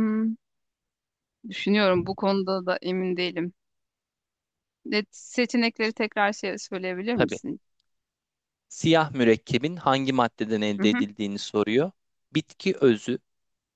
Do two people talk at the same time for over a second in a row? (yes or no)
no